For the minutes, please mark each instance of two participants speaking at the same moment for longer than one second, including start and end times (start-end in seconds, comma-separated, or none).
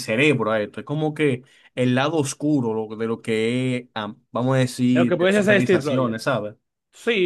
4.9-6.2